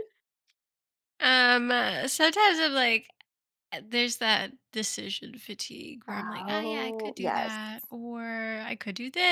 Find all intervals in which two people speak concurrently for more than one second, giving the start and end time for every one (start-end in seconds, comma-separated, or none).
6.1-7.6